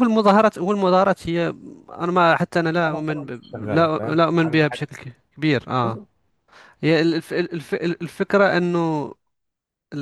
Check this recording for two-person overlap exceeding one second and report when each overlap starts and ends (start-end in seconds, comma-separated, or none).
2.9-4.9